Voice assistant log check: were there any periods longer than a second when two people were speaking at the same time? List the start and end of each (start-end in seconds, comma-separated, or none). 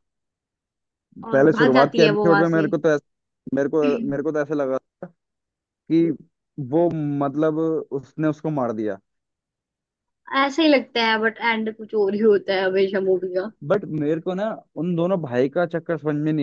1.3-2.7